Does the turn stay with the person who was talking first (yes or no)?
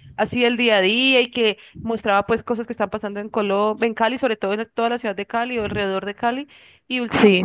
yes